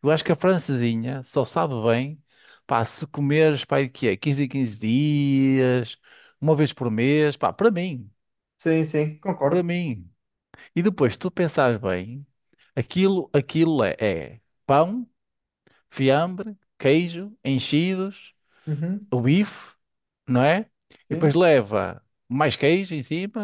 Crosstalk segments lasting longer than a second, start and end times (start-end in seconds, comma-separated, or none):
none